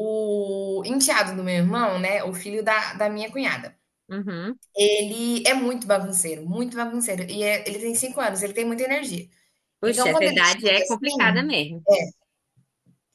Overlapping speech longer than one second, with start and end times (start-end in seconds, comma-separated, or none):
9.8-11.4